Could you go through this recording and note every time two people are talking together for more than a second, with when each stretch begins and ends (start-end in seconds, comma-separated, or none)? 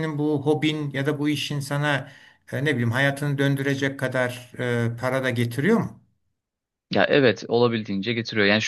none